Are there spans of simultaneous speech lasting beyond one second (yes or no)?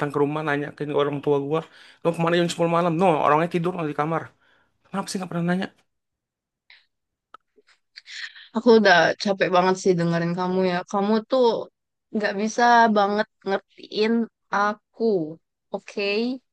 no